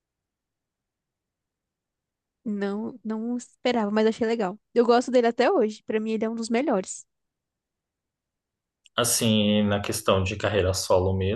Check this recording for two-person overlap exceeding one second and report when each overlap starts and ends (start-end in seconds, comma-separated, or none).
none